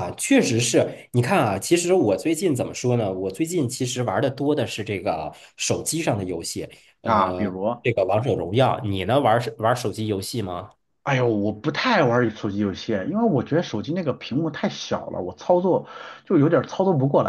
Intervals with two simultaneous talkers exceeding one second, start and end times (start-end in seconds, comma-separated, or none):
none